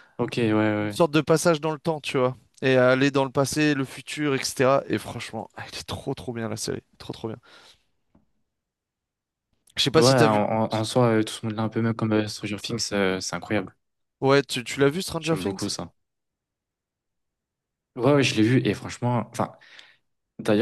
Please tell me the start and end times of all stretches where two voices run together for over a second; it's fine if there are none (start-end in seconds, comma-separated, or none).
none